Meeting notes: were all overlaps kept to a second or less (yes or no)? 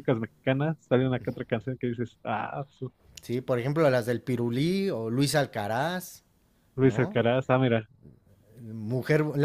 yes